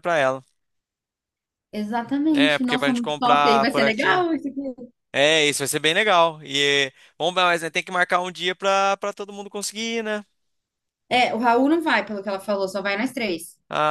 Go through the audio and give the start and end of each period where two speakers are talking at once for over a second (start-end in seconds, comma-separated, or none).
2.3-4.2